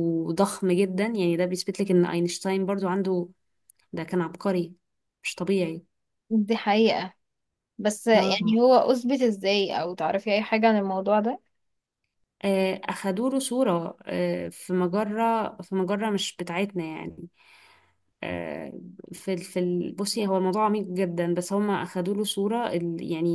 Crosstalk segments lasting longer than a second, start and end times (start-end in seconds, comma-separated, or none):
none